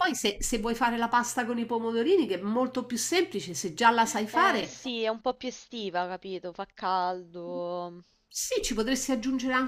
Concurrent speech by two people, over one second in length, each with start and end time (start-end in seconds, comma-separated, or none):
none